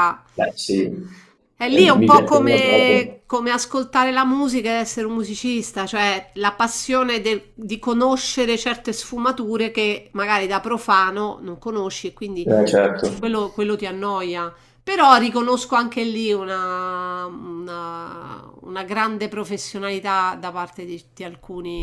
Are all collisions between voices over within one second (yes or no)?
no